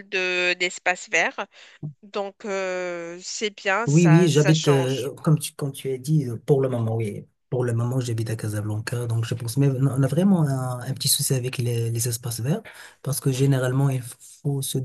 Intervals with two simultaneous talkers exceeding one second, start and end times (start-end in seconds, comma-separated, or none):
3.9-5.1